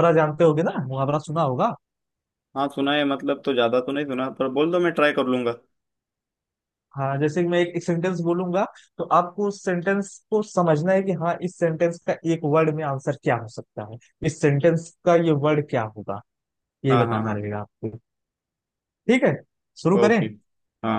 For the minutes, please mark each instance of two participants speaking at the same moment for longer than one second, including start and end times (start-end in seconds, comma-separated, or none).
none